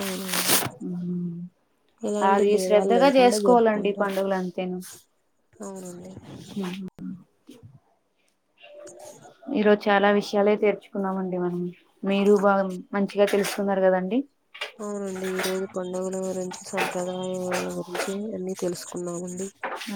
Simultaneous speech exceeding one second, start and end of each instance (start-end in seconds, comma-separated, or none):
2.3-4.1